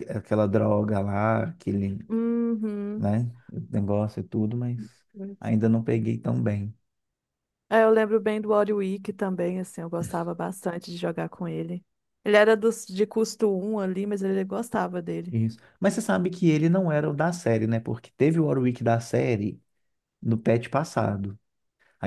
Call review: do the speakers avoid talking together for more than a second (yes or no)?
yes